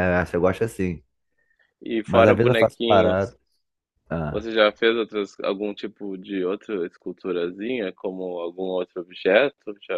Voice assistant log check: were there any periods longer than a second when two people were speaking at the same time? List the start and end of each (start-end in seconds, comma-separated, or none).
2.0-3.4